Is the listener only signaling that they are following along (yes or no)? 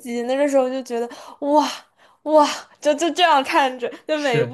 yes